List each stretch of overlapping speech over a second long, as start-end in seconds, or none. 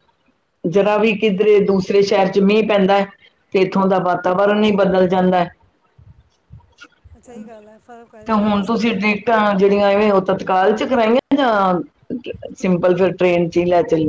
none